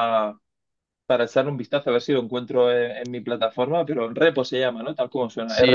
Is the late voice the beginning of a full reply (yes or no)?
yes